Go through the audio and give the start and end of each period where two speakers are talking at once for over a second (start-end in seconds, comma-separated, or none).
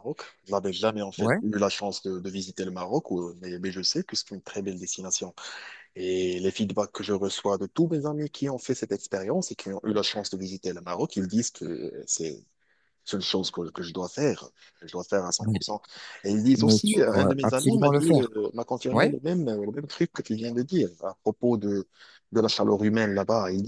16.6-18.3